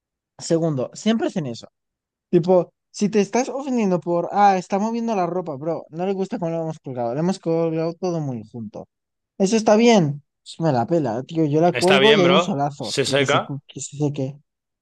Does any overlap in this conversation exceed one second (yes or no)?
yes